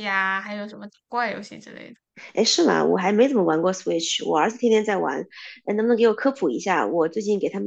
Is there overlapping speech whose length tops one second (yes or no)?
no